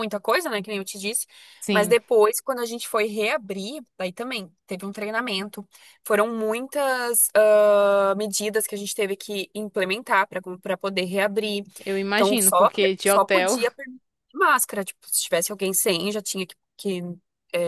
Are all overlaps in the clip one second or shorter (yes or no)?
no